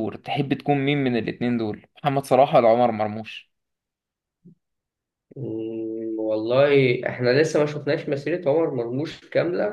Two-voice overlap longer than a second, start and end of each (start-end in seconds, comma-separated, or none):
none